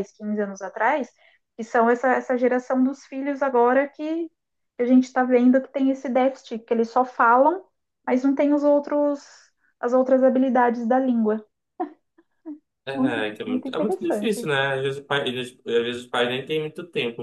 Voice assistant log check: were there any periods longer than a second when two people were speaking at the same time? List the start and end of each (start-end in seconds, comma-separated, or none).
12.9-14.5